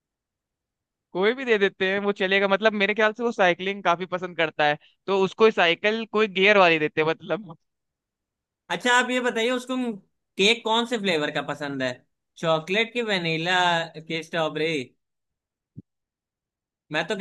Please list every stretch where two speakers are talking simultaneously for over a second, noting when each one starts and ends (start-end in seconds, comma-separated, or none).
none